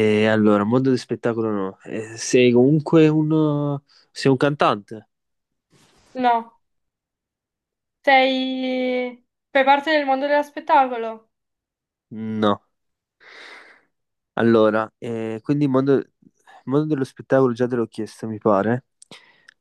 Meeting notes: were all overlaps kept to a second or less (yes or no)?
yes